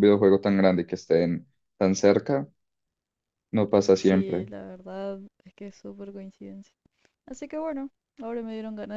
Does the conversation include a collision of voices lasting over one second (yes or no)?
no